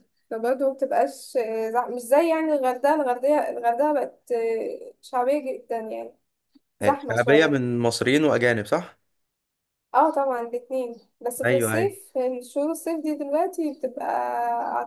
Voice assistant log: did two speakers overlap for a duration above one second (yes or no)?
no